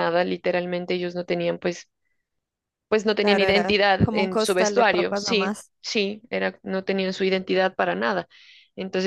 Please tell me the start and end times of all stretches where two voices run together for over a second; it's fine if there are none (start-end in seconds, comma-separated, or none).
3.2-5.7